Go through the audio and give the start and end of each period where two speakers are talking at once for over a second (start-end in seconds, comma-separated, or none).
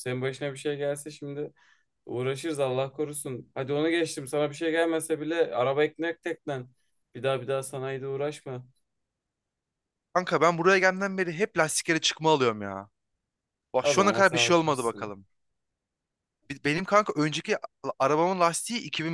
13.8-15.1